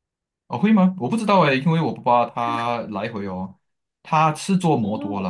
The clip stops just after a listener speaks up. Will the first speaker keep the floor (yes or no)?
yes